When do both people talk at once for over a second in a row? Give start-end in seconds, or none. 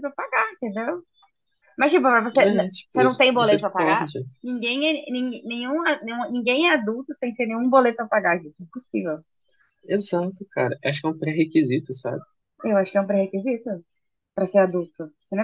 2.4-4.2